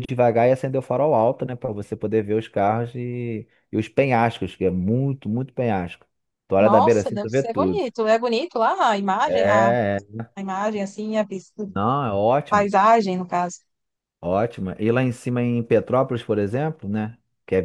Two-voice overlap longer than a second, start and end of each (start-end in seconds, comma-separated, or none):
6.6-7.8